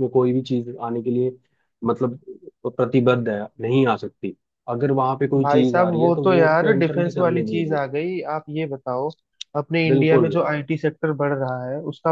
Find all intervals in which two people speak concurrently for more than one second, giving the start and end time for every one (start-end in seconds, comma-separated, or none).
5.4-7.8